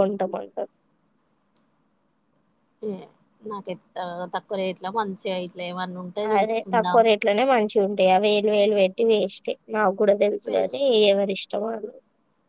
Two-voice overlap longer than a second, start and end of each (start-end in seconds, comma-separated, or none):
none